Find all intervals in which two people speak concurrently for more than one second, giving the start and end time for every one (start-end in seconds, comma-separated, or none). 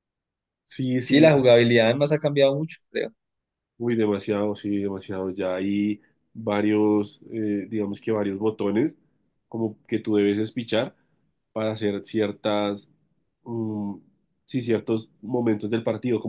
none